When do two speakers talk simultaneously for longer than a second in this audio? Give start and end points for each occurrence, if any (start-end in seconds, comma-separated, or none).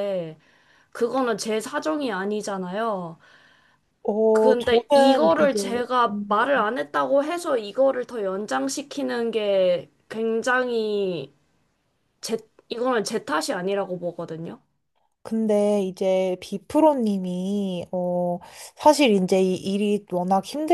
4.3-6.5